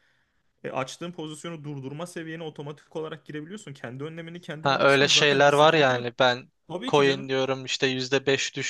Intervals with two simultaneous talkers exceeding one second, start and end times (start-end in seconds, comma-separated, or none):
4.6-6.1